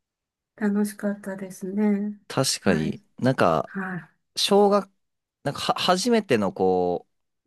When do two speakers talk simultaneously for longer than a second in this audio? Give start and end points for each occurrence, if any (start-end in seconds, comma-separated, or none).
none